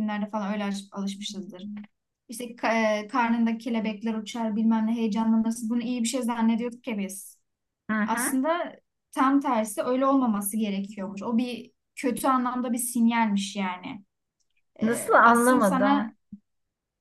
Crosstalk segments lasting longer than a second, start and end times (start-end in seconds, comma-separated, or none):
14.8-16.1